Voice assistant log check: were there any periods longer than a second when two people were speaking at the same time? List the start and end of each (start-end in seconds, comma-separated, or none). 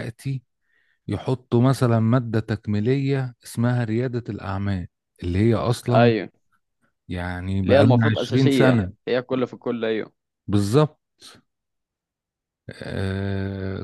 7.6-8.9